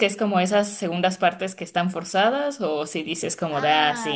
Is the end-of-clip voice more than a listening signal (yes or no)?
yes